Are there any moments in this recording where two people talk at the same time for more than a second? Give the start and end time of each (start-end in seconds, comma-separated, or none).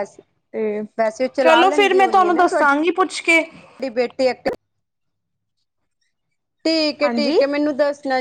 1.4-2.8